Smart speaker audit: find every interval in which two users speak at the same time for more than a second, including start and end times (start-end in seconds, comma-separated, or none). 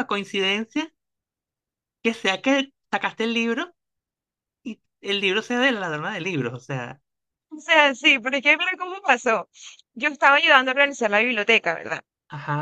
none